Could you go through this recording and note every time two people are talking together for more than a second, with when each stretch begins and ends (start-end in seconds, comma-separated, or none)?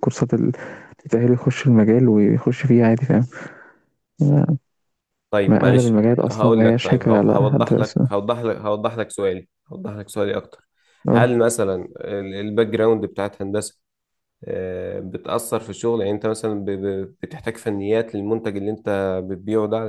5.5-8.1